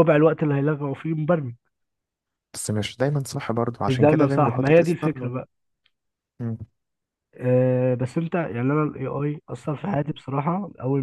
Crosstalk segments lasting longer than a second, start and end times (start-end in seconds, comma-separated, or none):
3.9-5.2